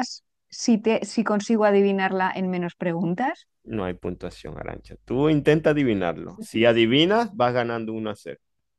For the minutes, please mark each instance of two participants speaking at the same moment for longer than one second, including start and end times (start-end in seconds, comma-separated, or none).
none